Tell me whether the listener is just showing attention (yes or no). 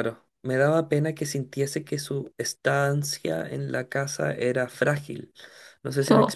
yes